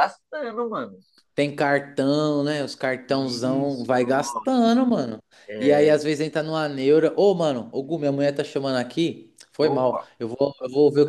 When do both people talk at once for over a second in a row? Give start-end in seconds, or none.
3.1-4.6